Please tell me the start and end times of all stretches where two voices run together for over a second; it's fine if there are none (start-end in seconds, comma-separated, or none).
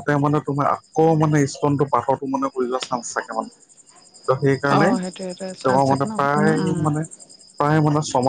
4.8-6.8